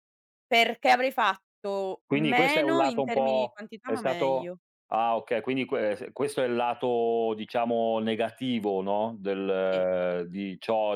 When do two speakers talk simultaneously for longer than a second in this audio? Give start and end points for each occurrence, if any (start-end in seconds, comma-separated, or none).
2.1-4.5